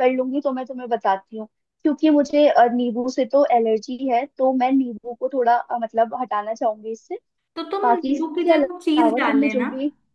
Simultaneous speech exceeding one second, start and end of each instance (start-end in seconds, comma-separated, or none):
7.8-9.7